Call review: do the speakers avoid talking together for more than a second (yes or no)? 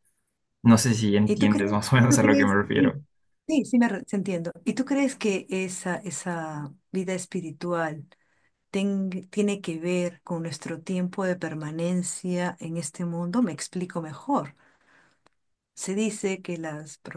no